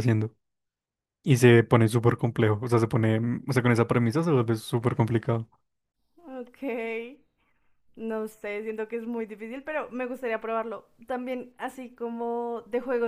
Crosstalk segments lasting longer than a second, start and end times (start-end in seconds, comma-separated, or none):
none